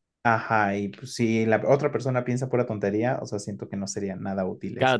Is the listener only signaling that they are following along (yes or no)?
no